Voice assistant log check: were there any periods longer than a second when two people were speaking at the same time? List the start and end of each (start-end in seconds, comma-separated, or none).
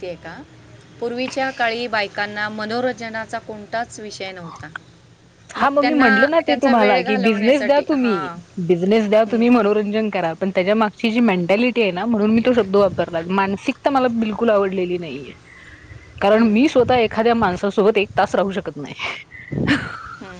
5.8-8.3